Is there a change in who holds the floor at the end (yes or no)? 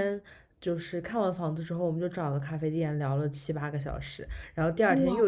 no